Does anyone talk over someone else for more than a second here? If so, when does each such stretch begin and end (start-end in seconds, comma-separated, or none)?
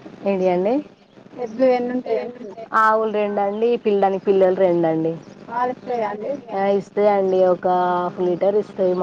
none